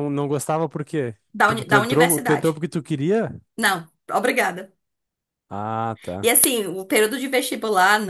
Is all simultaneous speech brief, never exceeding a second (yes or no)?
no